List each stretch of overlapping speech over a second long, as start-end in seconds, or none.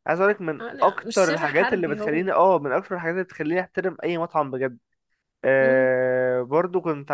0.6-2.3